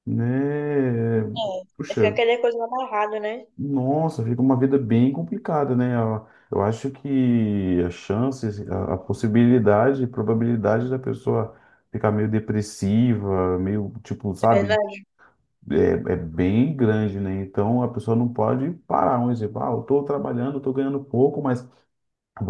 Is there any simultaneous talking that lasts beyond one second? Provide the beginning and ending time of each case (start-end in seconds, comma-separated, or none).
none